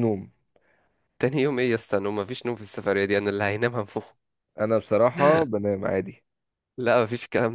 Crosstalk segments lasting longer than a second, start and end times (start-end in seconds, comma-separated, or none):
none